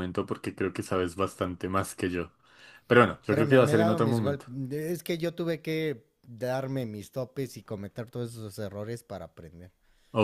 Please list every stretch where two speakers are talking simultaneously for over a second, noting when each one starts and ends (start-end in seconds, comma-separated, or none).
3.2-4.5